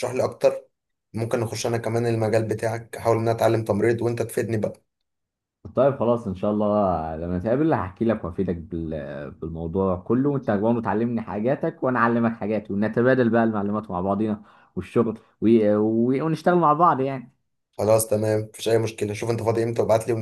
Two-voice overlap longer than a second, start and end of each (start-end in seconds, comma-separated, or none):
none